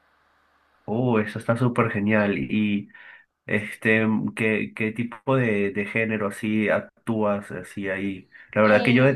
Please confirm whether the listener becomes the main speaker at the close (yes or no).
no